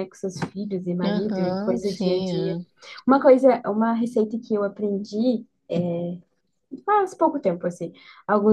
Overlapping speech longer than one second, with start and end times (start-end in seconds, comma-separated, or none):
1.0-2.6